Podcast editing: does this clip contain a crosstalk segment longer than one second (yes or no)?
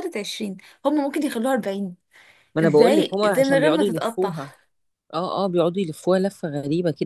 yes